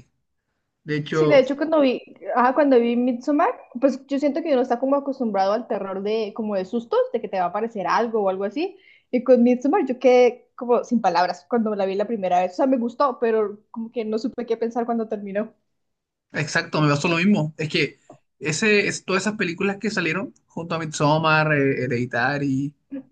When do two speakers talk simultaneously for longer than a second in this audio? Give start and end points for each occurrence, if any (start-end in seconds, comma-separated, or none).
none